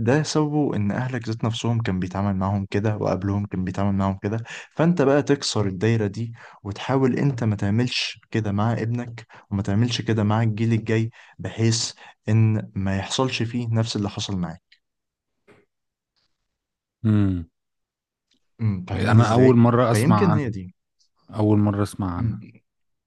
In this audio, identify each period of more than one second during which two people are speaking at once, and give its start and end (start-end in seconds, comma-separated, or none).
18.9-20.5